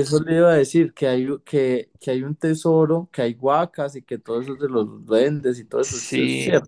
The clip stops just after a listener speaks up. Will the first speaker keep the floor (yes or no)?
no